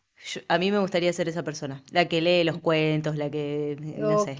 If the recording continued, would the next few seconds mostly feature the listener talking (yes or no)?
yes